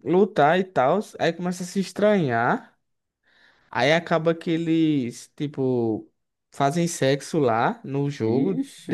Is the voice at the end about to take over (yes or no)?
no